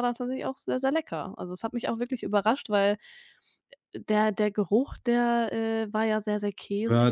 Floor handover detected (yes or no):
yes